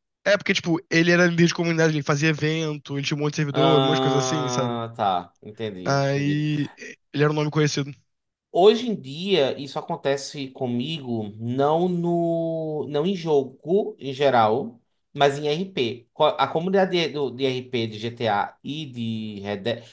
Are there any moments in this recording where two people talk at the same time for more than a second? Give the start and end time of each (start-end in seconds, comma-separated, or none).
3.5-4.8